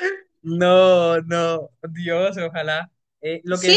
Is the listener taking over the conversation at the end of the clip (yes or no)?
yes